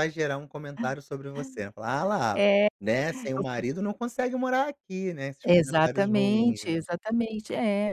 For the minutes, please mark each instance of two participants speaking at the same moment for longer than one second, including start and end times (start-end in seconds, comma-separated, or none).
5.4-6.8